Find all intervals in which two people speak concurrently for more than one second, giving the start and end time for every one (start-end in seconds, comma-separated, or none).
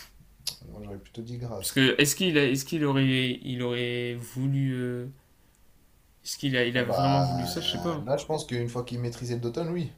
6.7-8.1